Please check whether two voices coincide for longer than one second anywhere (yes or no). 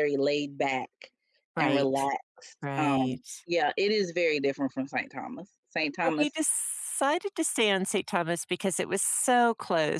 no